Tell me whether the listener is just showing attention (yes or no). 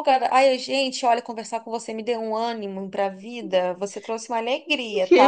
no